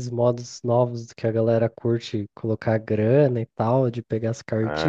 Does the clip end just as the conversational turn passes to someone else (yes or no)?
yes